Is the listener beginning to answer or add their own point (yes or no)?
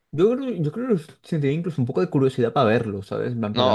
yes